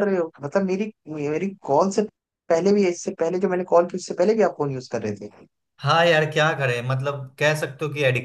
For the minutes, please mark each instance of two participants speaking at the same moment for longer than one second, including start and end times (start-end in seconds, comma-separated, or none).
none